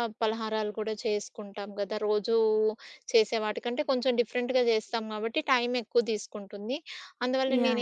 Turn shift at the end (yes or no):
no